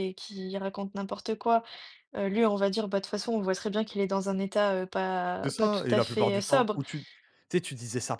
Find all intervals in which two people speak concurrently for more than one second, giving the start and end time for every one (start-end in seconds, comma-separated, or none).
5.4-6.8